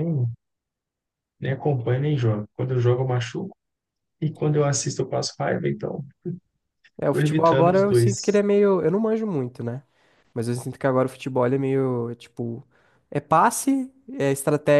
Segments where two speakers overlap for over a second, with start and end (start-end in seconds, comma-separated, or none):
7.1-8.4